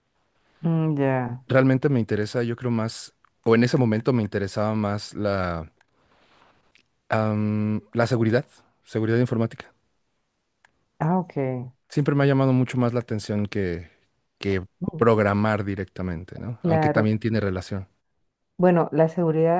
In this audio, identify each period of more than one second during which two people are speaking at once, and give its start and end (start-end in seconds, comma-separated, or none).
none